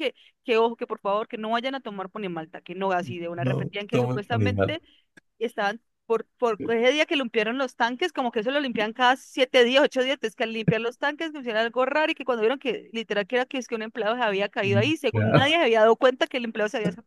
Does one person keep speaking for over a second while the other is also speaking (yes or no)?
yes